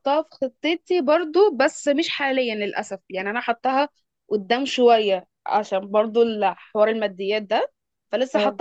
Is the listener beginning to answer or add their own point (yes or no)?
no